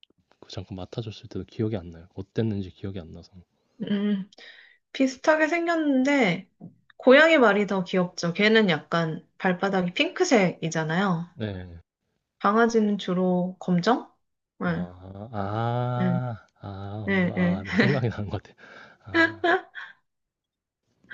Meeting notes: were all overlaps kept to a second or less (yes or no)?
yes